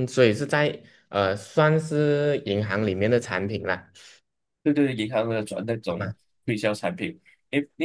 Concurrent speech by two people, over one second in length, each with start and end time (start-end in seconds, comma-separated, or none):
none